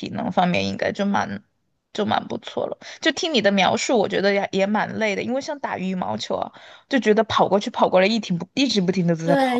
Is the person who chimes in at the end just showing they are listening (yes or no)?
no